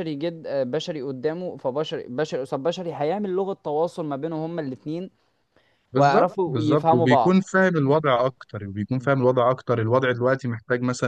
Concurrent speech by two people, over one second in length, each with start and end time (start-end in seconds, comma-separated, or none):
6.0-7.4